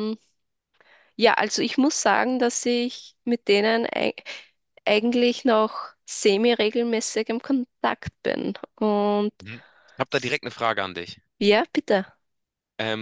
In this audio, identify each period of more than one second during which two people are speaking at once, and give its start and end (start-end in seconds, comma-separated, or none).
none